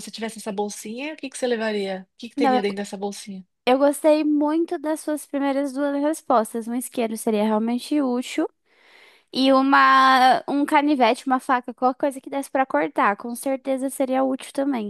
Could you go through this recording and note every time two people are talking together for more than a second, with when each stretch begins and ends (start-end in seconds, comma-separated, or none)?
none